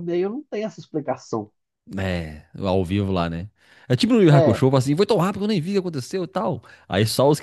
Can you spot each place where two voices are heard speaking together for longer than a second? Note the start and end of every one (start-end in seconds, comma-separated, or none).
none